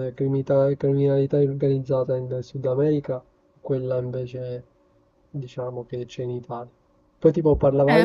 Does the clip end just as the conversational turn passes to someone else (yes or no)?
yes